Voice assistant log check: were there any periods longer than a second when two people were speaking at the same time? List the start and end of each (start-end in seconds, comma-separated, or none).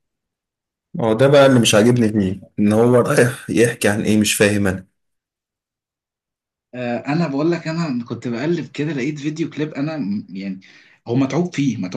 none